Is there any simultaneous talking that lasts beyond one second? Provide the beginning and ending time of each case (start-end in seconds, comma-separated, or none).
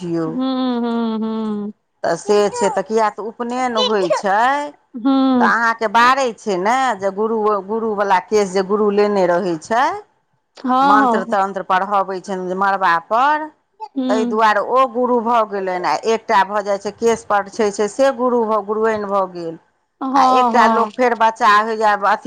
none